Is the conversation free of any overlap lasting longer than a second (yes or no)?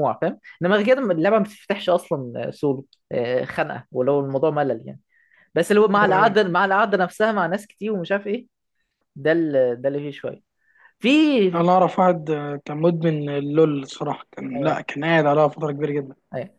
yes